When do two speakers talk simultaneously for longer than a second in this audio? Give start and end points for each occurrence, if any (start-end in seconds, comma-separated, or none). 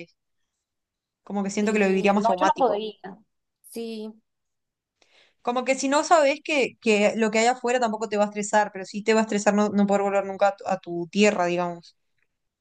1.6-2.8